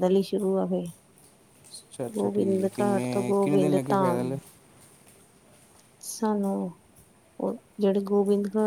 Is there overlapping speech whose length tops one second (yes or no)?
yes